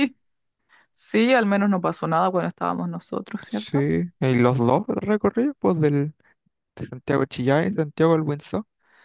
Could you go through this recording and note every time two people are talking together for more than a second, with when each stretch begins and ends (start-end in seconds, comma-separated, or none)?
none